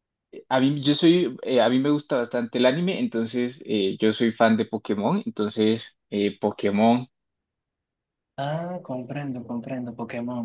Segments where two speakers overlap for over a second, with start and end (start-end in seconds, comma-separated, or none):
none